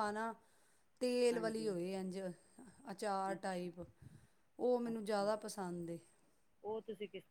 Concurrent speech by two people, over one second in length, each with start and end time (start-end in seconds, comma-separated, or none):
none